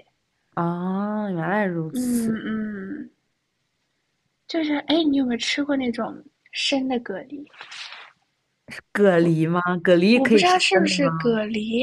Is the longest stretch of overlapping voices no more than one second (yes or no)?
no